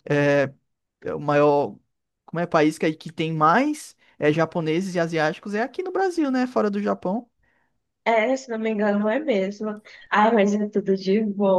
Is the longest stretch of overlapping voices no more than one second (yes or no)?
yes